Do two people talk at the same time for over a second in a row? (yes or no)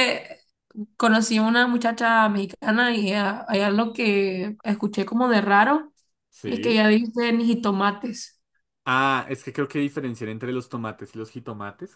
no